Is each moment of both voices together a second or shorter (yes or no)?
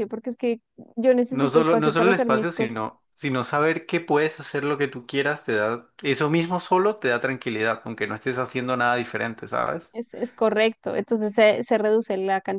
no